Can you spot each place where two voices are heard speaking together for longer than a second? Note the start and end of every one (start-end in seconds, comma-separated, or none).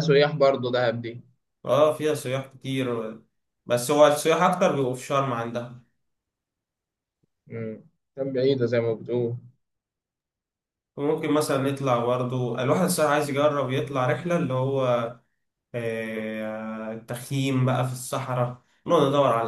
none